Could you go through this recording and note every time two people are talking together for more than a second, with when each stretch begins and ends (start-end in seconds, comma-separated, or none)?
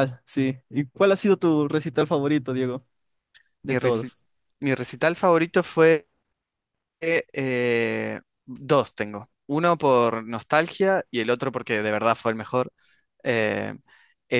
none